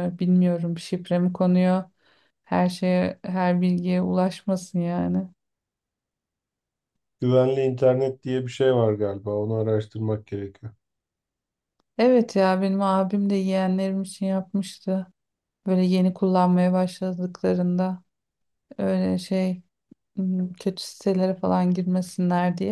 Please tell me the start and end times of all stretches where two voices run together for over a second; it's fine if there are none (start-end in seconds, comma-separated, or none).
none